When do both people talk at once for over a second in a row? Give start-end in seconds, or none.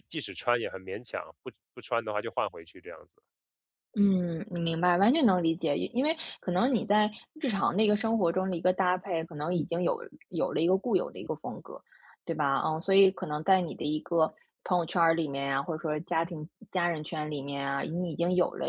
none